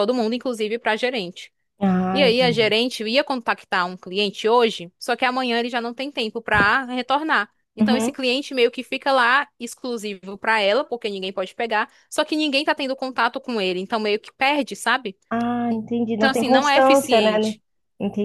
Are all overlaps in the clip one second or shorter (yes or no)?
no